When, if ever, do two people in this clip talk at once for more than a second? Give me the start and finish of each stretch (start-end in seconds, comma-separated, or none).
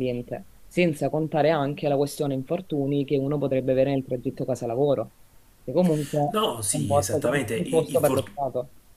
6.3-8.2